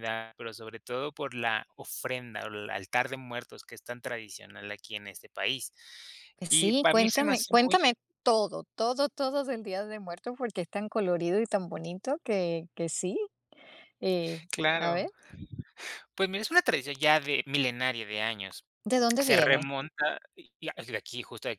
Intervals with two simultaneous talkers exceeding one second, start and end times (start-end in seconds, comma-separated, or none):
6.5-7.8